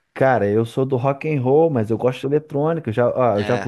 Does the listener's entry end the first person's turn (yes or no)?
no